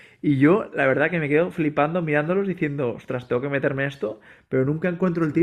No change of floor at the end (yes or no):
yes